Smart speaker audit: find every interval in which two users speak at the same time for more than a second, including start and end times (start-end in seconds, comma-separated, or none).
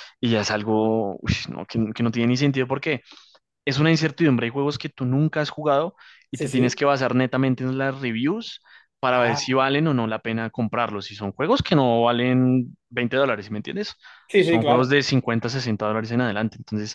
none